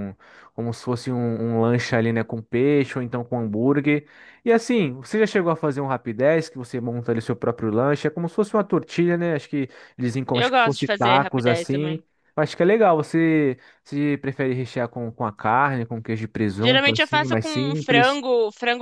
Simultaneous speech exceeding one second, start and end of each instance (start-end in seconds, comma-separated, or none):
10.3-12.0, 16.6-18.2